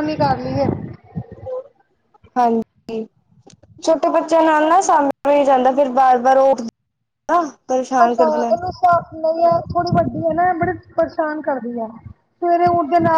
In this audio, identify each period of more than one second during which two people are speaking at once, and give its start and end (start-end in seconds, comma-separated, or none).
none